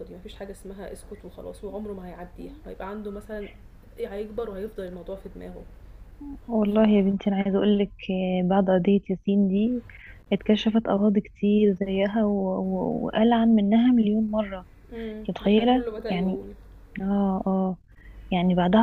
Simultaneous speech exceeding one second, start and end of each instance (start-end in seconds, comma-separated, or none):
14.9-16.4